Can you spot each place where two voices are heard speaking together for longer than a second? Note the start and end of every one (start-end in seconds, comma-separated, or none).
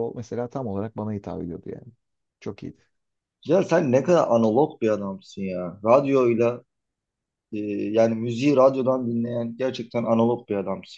none